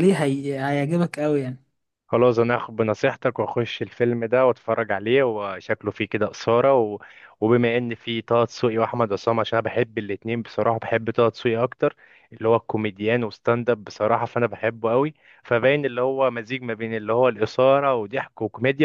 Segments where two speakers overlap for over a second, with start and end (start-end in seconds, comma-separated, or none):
none